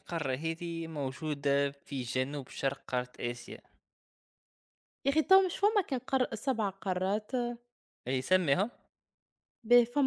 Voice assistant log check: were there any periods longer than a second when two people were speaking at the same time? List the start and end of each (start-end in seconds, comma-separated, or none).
none